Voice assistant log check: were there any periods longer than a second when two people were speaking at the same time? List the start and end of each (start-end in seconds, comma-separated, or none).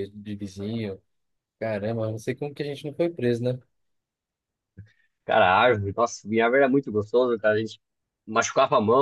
none